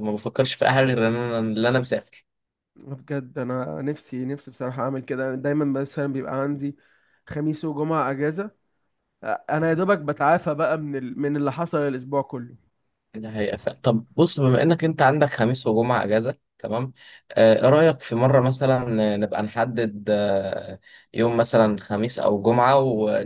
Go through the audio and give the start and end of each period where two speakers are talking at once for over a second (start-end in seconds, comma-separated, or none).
none